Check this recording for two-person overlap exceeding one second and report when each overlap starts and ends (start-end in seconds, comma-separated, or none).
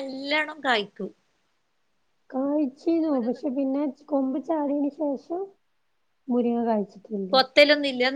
none